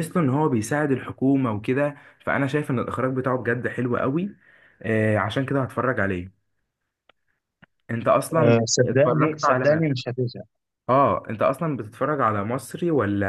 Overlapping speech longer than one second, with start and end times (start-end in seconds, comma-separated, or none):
8.3-9.7